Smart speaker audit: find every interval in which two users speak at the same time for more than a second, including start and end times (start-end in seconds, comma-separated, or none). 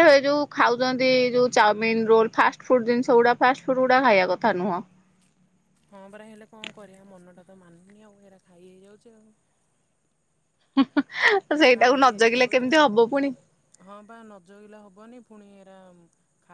11.6-13.3